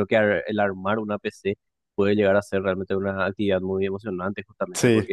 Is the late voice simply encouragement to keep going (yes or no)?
yes